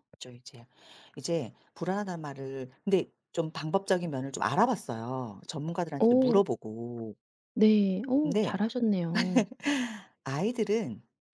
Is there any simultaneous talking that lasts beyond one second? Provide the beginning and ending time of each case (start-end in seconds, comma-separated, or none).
none